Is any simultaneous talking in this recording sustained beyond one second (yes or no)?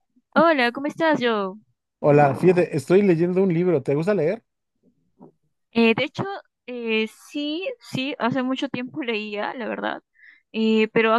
no